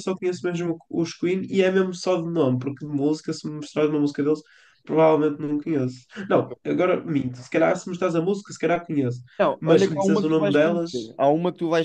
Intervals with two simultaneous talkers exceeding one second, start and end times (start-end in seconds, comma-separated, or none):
9.6-11.1